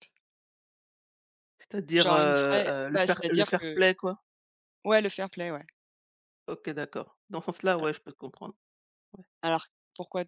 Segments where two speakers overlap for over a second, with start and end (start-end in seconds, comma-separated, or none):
1.9-3.8